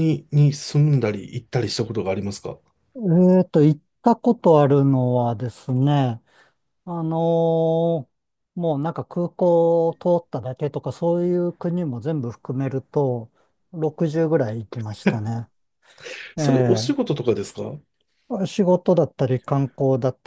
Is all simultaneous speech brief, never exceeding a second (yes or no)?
yes